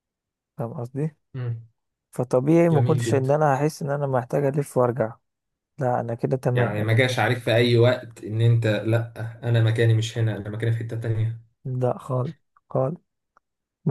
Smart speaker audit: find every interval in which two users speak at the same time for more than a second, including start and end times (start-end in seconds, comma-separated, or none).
none